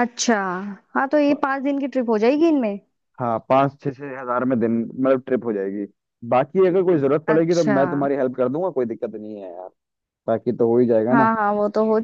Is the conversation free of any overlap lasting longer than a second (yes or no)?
yes